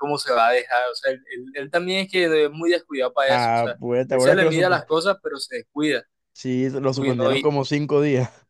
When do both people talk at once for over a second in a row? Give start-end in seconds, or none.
3.3-4.8